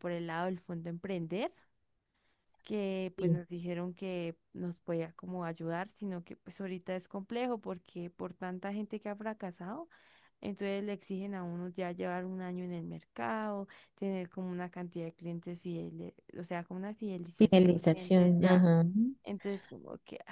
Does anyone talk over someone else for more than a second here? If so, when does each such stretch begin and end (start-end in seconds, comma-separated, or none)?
17.4-18.6